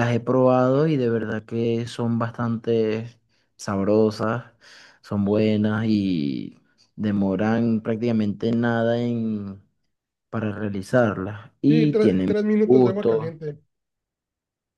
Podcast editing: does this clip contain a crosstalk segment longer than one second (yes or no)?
yes